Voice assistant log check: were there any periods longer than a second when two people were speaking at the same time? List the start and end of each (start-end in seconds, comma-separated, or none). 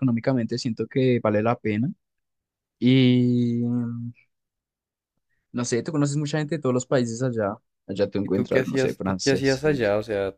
8.2-9.6